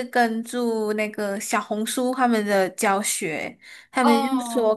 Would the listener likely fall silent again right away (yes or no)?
yes